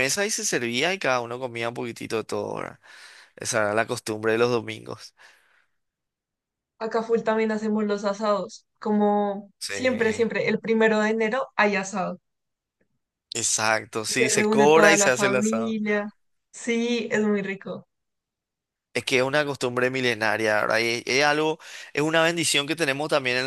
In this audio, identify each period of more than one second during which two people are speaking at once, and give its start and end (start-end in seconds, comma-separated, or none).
14.1-15.8